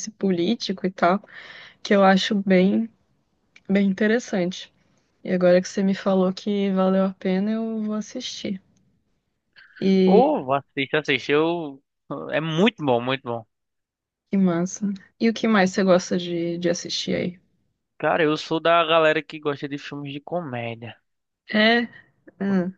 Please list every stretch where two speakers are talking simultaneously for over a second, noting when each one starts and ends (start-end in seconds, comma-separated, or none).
none